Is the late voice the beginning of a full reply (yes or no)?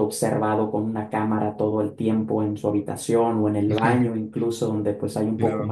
yes